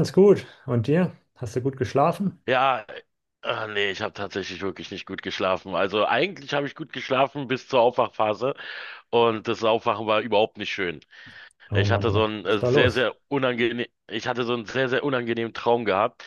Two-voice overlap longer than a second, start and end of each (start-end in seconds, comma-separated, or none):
11.7-13.1